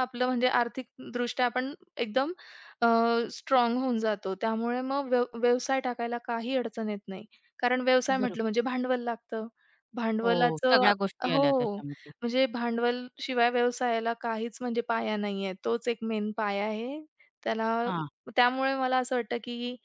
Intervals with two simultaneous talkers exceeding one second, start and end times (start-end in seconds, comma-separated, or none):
10.2-11.8